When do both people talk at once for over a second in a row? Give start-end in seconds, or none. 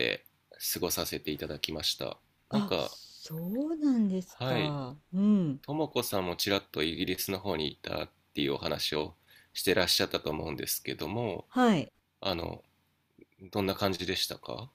none